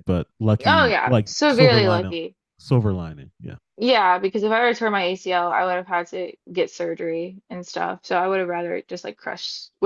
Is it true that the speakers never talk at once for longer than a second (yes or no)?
no